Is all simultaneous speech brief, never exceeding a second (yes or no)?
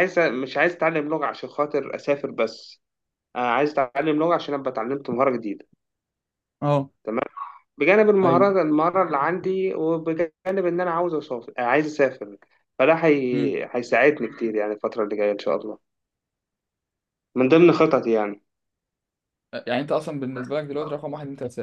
yes